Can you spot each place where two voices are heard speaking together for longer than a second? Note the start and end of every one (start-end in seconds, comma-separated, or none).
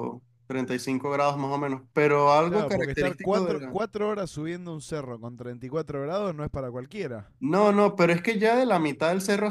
2.5-3.8